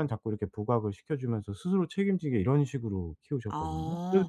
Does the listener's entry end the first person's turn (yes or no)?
no